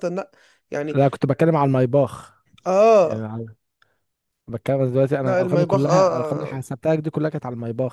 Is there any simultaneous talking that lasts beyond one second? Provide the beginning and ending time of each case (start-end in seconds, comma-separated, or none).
5.2-6.6